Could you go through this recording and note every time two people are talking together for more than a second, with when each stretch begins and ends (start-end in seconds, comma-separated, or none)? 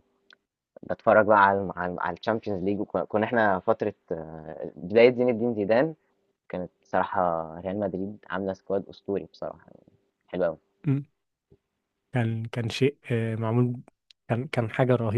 none